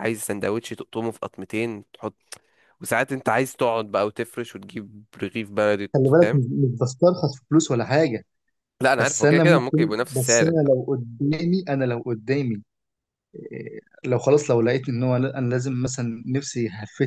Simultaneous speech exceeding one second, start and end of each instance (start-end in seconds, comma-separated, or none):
9.0-10.7